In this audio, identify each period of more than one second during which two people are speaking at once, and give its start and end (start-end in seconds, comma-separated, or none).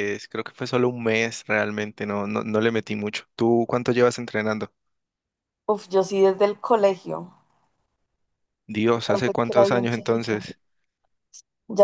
9.1-10.4